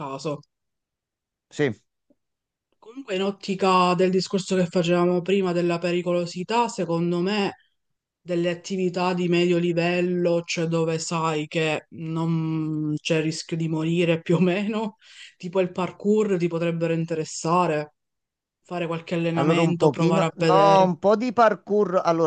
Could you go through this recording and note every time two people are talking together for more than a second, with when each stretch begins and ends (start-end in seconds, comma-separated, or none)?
19.4-20.9